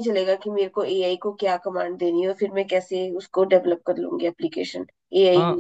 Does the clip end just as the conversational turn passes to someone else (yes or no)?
yes